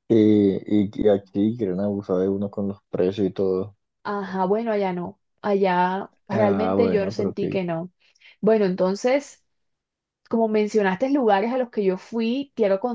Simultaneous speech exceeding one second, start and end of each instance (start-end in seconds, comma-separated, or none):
6.3-7.6